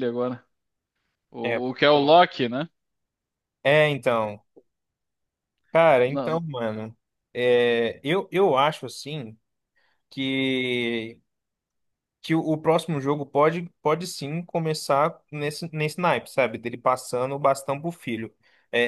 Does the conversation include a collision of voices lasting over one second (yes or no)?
no